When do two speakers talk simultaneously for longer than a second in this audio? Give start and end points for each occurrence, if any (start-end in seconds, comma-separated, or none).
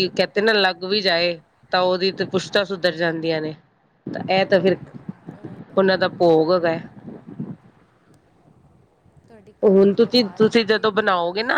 9.6-11.1